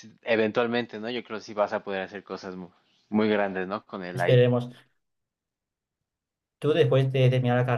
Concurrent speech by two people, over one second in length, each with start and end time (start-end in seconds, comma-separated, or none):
none